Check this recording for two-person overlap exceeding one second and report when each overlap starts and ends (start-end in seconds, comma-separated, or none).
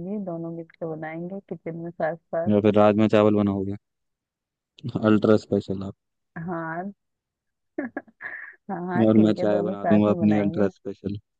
9.1-10.7